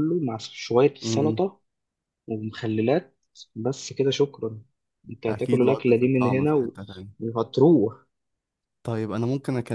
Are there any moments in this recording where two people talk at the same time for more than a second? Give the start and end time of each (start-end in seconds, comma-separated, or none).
5.3-6.8